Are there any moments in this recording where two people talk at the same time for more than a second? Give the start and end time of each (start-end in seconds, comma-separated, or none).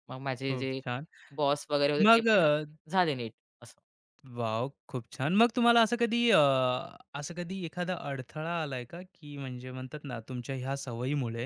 none